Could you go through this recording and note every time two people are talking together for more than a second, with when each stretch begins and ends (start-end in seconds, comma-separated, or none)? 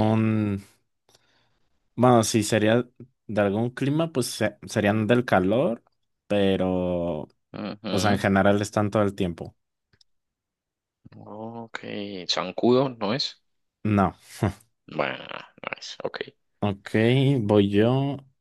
none